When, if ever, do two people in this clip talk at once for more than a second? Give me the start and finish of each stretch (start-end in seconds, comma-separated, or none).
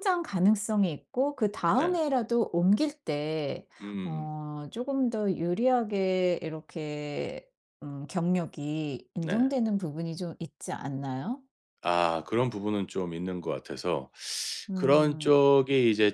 none